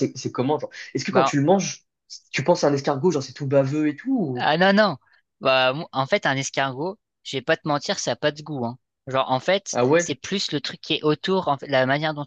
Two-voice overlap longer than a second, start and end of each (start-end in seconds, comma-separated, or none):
none